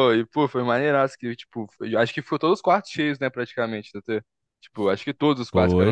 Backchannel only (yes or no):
no